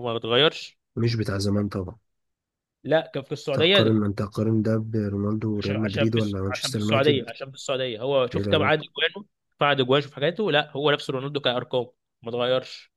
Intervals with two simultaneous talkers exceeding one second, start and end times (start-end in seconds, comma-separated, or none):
5.6-7.3